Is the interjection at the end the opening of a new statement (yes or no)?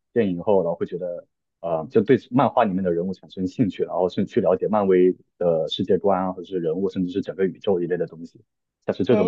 yes